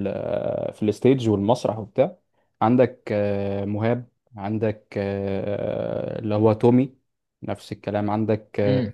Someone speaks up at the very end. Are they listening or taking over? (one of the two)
listening